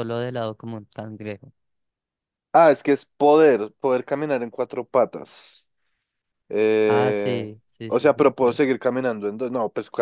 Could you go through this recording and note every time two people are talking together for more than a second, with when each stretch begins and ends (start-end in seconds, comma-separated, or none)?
6.9-8.6